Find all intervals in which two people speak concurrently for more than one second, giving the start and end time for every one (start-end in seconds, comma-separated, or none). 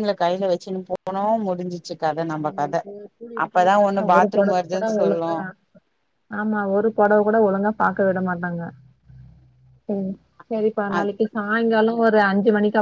3.5-5.3